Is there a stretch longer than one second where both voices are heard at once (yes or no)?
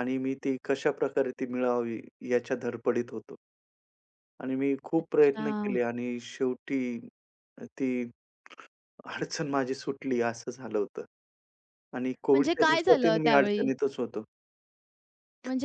yes